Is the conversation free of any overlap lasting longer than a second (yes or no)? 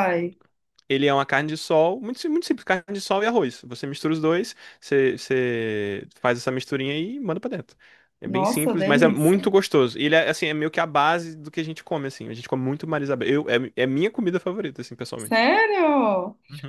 no